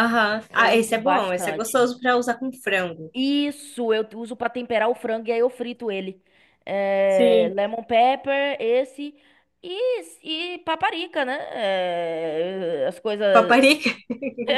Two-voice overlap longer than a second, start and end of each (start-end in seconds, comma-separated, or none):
0.6-1.9